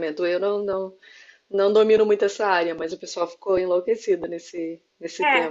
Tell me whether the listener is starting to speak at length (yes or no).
yes